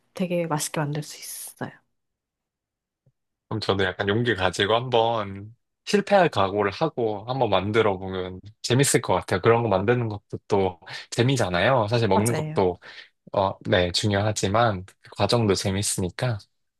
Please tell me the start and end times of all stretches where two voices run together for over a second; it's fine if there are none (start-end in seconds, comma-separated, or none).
none